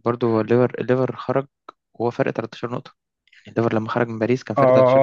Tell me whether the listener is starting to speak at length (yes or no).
yes